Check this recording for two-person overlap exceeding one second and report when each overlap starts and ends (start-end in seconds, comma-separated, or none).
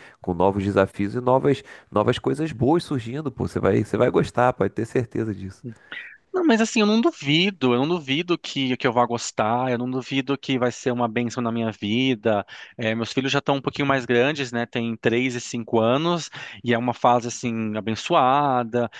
none